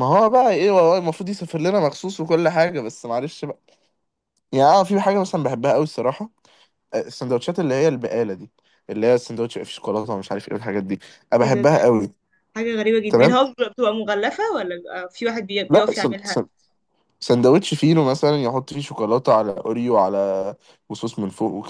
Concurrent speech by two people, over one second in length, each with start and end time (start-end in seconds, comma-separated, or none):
none